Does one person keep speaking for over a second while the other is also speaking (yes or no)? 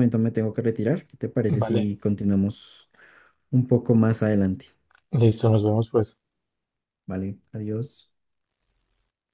no